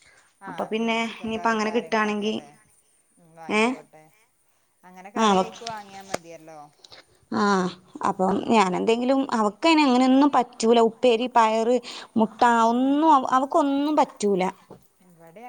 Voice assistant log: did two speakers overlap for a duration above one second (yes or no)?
yes